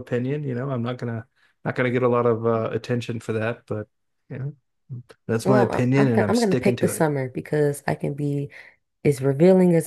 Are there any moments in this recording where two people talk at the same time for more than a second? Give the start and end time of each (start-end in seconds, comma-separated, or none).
5.4-7.1